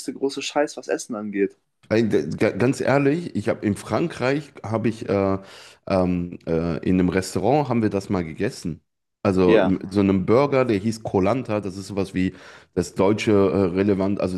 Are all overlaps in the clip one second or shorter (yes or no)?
yes